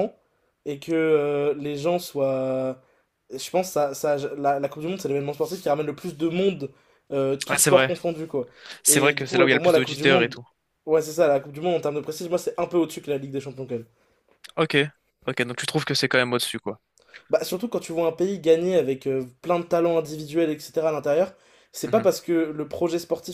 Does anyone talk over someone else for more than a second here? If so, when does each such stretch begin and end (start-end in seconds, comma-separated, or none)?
8.9-10.4